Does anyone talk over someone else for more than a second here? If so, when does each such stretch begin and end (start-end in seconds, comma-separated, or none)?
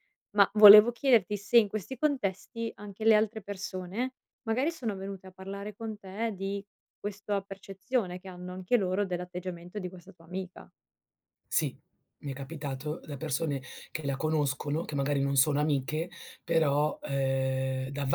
none